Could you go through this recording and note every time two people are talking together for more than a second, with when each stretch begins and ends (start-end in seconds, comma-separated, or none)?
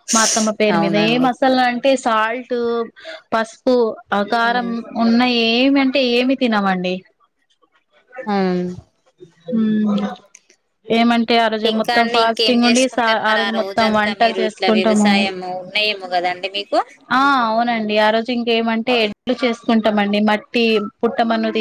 13.4-15.2